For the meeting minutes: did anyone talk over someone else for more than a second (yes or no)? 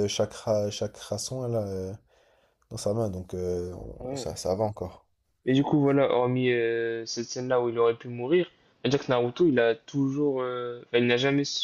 no